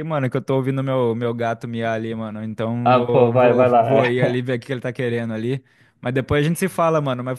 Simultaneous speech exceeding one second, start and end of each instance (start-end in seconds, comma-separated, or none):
2.8-4.3